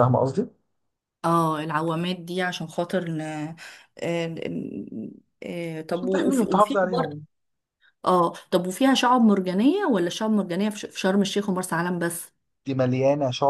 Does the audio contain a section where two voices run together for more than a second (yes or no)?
yes